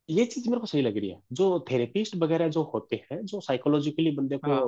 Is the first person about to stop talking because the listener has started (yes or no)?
no